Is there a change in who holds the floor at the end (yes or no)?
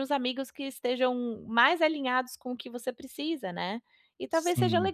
no